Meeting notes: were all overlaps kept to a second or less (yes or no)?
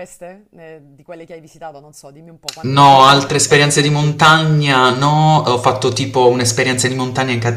no